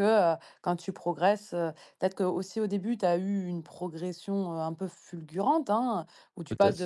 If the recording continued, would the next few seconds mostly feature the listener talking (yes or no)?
no